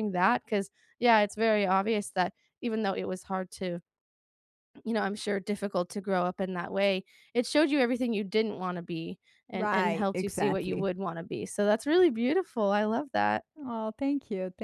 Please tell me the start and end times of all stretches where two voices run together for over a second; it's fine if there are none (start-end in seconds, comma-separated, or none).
9.5-10.9